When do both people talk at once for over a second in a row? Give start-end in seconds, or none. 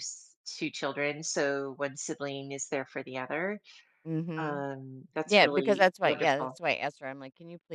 5.2-6.6